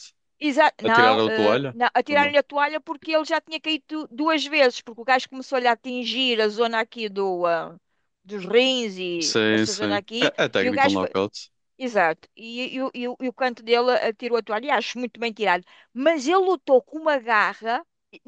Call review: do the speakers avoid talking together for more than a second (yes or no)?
no